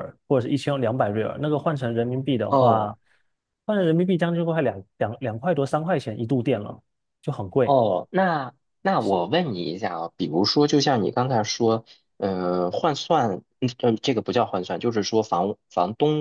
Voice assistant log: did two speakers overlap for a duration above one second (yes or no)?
no